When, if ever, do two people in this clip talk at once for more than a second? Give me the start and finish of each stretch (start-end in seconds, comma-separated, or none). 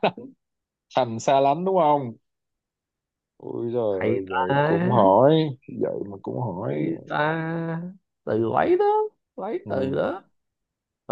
3.9-5.1